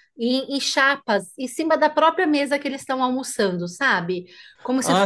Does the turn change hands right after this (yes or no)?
yes